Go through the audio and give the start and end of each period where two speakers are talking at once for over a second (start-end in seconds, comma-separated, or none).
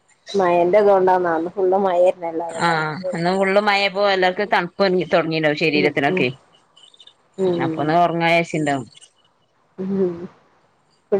none